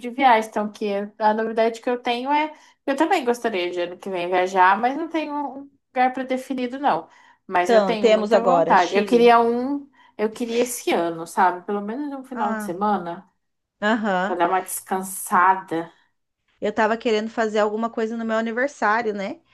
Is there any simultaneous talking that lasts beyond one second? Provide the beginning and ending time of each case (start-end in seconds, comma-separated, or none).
7.6-9.3